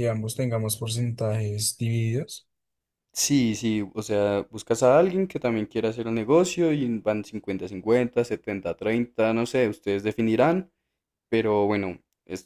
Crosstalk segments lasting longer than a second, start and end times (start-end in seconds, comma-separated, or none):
none